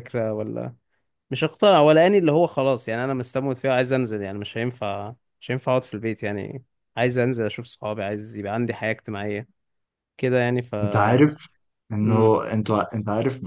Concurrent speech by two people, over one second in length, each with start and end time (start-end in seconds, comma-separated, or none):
none